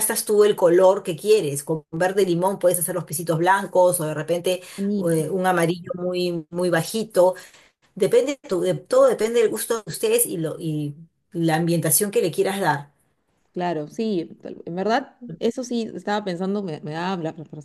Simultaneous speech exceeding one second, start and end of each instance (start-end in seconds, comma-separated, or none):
none